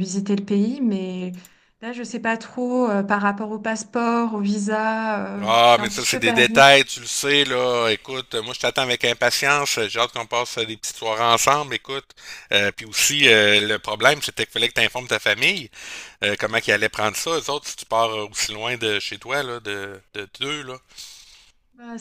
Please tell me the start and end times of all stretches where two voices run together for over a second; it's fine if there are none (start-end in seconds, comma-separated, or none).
5.4-6.6